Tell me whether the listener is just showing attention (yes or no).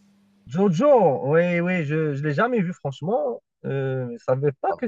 no